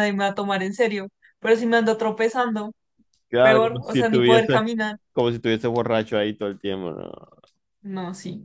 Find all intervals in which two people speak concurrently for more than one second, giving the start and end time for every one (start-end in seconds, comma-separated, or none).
3.4-4.7